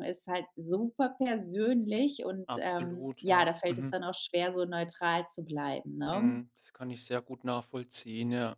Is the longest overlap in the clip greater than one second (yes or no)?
yes